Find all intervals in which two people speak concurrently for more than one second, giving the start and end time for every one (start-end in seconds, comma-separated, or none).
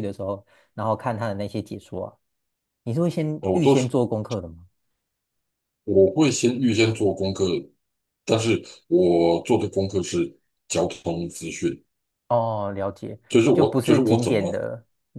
13.3-14.7